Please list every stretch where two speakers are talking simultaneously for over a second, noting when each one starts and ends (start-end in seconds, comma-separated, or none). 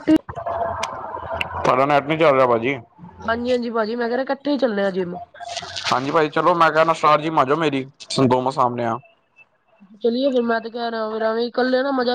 none